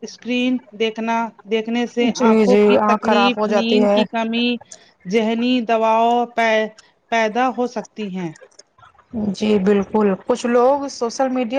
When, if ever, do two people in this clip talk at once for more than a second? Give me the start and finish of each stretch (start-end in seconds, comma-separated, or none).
2.1-4.0